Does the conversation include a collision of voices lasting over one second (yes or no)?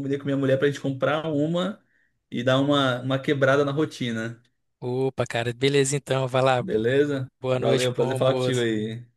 yes